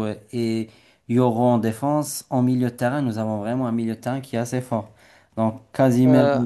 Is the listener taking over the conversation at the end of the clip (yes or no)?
no